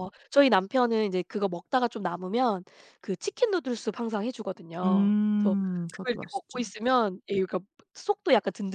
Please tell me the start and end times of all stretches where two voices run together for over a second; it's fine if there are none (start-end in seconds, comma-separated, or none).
4.8-6.6